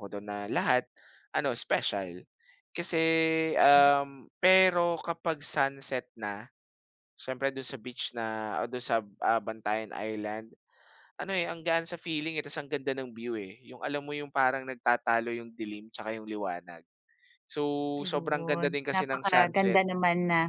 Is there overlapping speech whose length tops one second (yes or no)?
yes